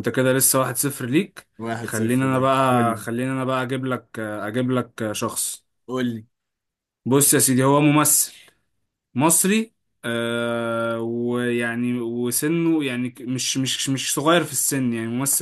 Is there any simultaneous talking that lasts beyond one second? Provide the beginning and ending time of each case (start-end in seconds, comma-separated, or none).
1.8-3.0